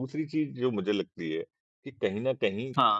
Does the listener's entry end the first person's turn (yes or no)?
no